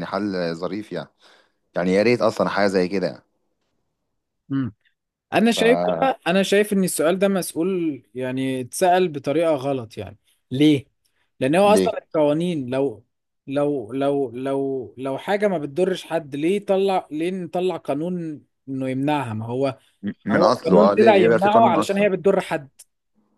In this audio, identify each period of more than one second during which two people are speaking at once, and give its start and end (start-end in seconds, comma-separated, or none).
20.3-22.1